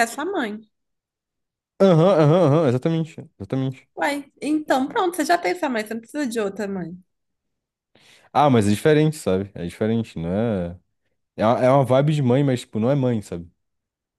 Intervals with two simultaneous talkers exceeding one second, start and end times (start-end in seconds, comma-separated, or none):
none